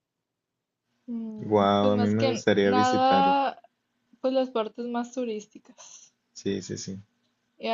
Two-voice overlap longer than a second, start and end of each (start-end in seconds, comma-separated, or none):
1.4-3.4